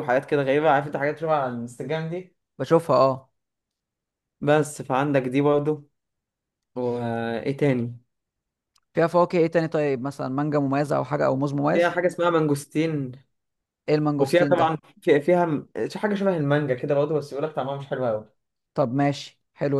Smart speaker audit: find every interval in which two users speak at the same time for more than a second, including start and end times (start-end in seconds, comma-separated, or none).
none